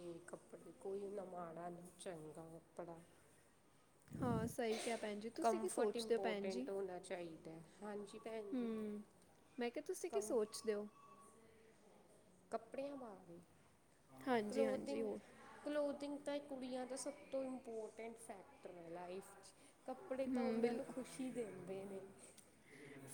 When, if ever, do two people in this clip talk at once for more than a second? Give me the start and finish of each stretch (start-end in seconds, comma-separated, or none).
5.4-6.7